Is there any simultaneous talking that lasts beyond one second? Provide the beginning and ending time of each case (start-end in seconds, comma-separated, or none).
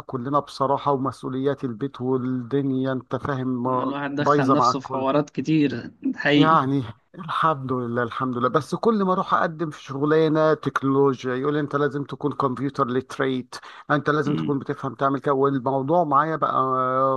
3.6-5.1